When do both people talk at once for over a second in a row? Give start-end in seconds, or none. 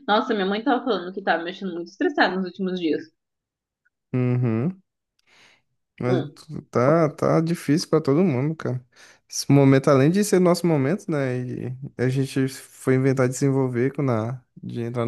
none